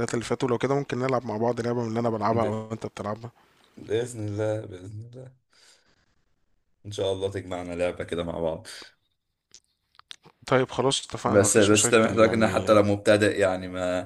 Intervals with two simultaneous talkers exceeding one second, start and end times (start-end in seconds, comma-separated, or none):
11.2-12.8